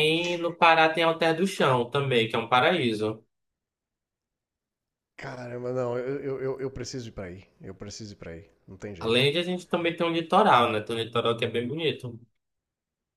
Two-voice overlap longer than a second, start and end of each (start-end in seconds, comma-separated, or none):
none